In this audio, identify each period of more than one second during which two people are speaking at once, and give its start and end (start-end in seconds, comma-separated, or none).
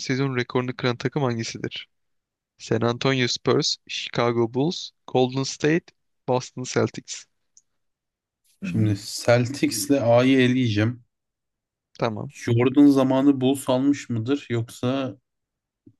none